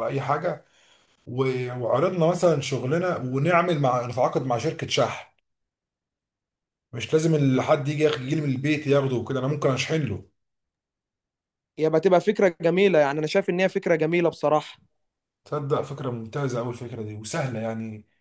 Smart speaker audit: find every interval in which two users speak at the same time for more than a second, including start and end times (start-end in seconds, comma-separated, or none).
none